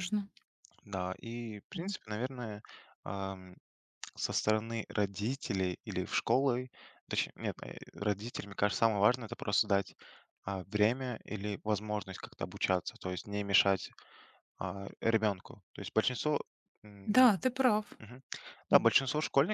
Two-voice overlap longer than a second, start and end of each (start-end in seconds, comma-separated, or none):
none